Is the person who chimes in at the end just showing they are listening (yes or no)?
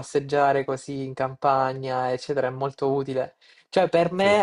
yes